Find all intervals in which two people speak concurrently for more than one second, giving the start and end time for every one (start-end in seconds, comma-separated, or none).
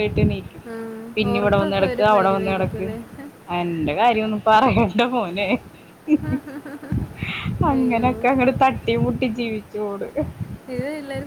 1.2-2.9